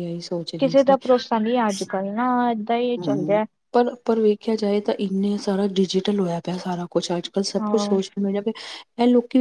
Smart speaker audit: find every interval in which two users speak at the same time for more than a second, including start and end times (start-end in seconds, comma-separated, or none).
none